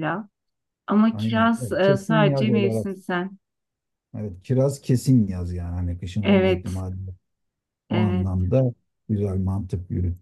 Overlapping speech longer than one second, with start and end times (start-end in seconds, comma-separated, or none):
1.1-2.9